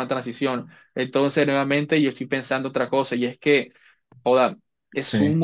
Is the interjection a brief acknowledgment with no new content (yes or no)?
yes